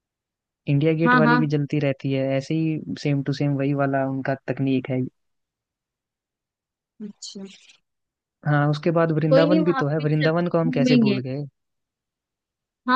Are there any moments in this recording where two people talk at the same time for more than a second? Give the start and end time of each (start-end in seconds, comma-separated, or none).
9.3-11.2